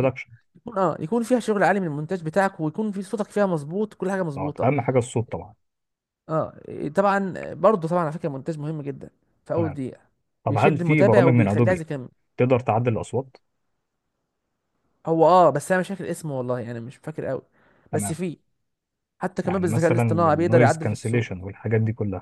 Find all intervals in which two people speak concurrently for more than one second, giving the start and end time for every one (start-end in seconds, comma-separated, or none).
10.5-11.8, 19.4-21.4